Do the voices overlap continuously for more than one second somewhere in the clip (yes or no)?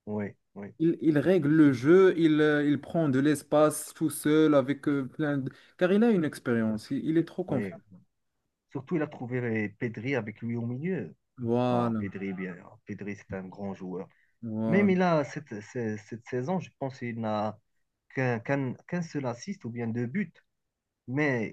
no